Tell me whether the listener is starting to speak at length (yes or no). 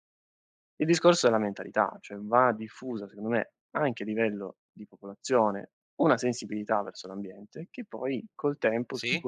no